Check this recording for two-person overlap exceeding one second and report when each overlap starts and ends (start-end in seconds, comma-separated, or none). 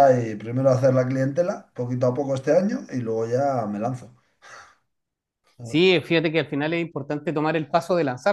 none